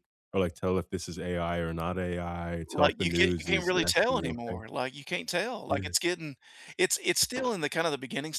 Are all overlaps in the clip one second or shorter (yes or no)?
no